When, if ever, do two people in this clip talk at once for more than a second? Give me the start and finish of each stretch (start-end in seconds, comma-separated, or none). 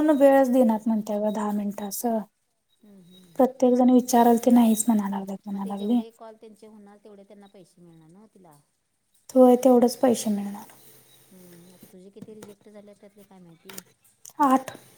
none